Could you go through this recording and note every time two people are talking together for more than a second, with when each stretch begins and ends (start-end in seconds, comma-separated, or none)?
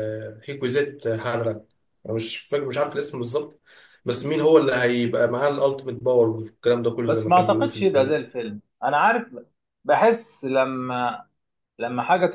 7.0-8.3